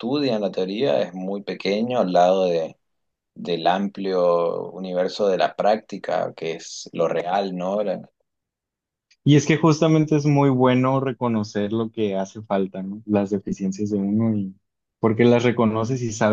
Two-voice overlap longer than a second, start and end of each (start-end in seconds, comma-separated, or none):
none